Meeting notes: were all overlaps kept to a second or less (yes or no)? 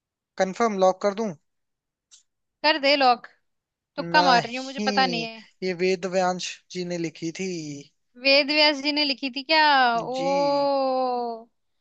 no